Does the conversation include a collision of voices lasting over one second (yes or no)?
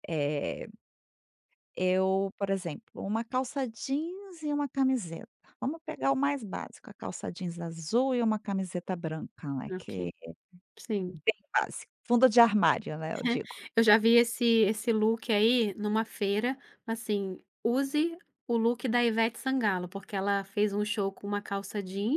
no